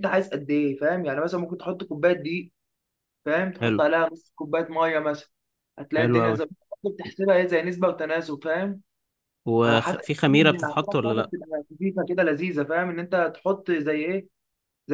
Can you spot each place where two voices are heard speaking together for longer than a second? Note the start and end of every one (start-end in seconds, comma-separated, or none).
9.6-11.3